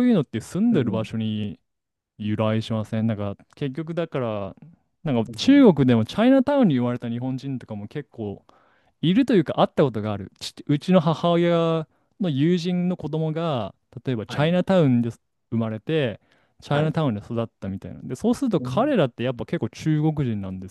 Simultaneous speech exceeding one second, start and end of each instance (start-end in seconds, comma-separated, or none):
none